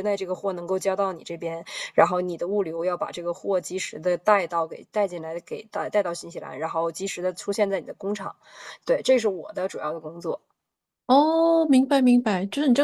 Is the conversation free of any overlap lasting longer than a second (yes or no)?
yes